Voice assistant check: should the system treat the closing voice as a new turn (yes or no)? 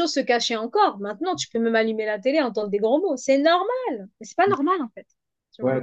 yes